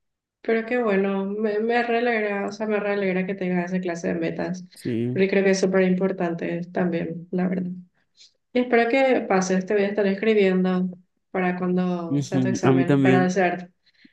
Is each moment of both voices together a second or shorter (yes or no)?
no